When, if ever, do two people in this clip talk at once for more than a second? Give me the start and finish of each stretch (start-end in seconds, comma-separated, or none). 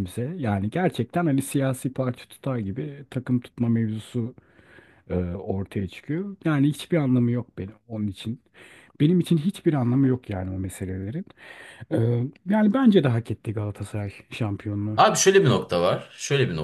none